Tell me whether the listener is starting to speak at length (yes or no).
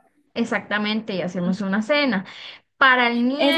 yes